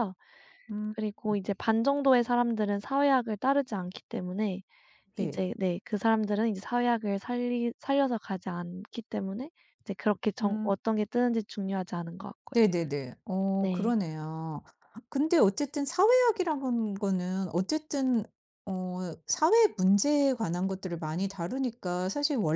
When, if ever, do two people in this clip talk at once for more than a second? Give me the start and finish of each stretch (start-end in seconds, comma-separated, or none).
none